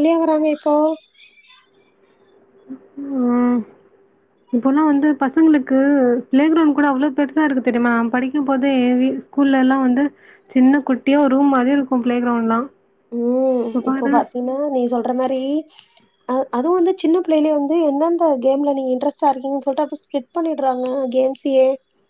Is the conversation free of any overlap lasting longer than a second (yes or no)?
yes